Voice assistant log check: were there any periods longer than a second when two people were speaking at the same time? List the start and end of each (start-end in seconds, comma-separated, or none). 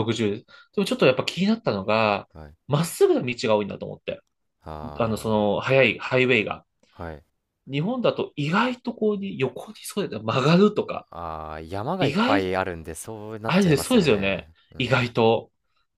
13.4-15.1